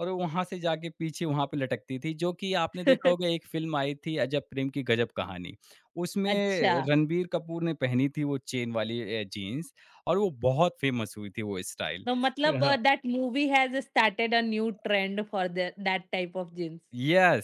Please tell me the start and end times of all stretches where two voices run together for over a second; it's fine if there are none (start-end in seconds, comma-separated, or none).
none